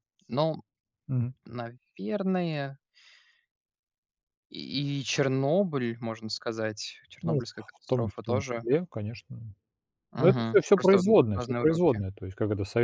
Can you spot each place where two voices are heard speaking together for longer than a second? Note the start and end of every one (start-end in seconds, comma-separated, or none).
7.2-8.7, 10.1-12.0